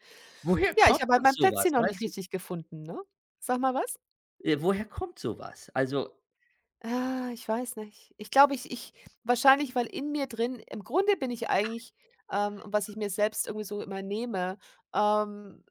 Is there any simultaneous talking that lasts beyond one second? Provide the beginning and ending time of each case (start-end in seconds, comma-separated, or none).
0.8-2.1